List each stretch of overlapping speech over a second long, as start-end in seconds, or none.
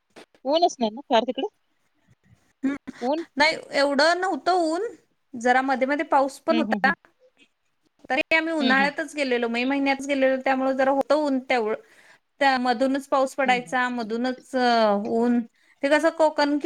none